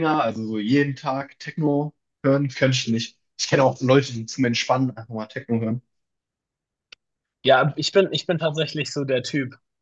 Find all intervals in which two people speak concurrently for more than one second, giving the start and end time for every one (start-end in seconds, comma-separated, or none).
none